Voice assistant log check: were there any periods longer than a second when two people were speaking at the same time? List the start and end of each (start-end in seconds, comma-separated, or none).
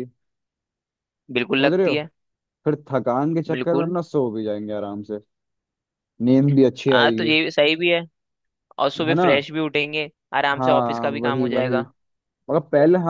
10.5-11.8